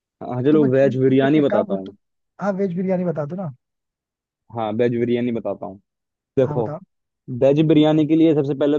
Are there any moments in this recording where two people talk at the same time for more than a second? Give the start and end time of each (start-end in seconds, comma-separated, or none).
0.5-1.9